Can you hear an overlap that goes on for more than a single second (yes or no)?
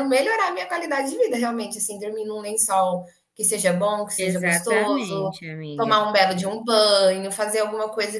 yes